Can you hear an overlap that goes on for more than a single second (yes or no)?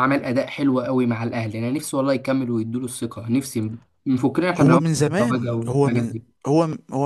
yes